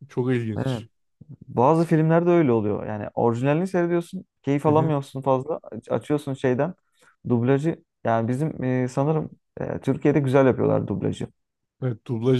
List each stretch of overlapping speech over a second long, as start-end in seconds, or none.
none